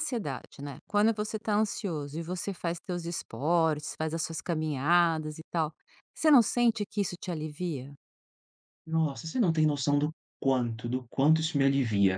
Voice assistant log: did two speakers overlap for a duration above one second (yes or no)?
no